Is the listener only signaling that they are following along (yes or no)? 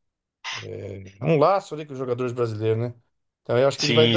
yes